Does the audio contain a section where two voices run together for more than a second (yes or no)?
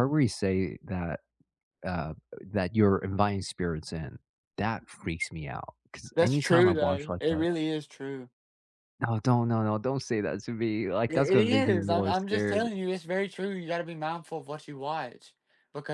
yes